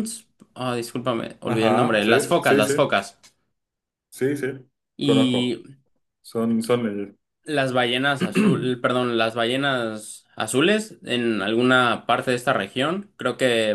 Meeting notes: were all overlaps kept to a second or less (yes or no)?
no